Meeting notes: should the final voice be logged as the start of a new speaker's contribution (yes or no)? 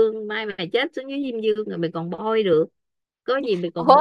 yes